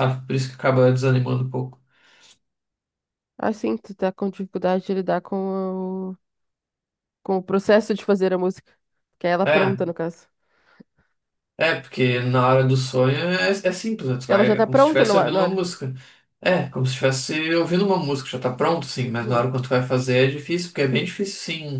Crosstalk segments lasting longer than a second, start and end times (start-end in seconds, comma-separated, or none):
14.3-15.6